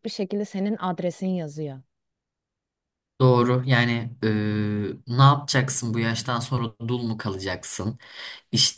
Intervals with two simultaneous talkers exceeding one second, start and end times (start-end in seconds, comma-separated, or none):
none